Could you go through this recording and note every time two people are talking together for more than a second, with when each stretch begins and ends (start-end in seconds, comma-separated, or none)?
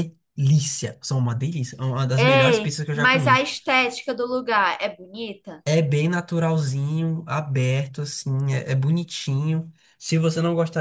2.2-3.4